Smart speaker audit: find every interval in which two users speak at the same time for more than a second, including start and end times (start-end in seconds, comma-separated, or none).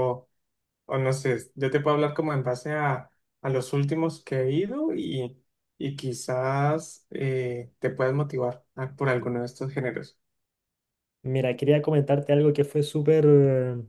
none